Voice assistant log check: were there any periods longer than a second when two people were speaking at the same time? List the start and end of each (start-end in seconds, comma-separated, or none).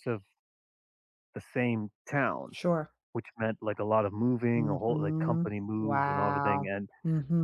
4.5-6.9